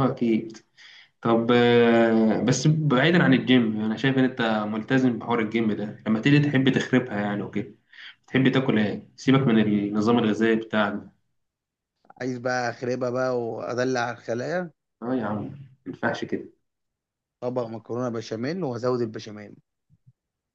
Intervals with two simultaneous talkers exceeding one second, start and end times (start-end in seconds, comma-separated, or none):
none